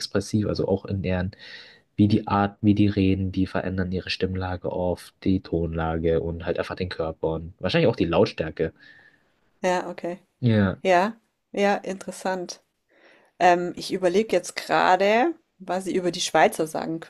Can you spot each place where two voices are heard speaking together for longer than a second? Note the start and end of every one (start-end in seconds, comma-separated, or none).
none